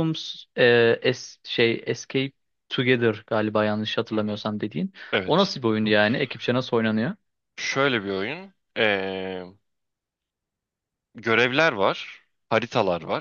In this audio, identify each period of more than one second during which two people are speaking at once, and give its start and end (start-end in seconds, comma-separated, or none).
none